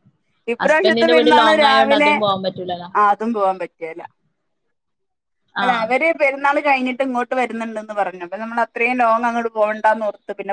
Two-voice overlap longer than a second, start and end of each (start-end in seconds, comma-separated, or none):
0.6-2.1